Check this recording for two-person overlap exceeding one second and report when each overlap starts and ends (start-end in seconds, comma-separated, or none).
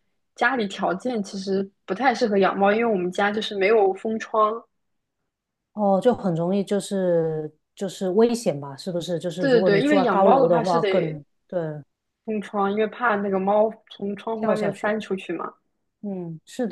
9.4-11.2